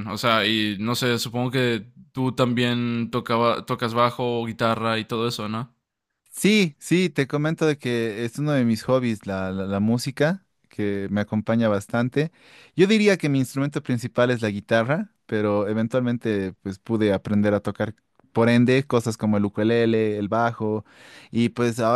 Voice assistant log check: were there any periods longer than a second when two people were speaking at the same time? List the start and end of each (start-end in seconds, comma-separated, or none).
none